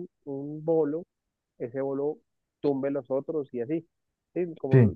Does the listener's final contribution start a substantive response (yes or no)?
no